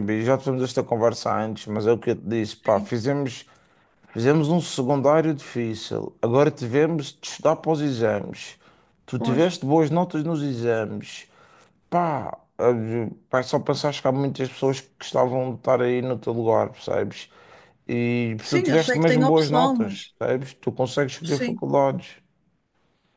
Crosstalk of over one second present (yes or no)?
yes